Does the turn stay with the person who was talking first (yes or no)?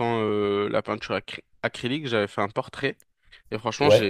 yes